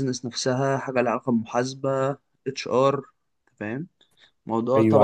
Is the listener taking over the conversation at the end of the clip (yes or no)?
yes